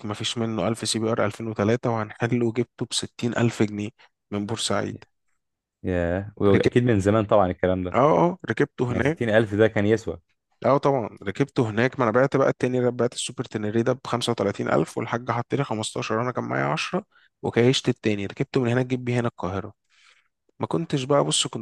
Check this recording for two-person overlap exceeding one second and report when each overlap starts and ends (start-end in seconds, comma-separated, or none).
none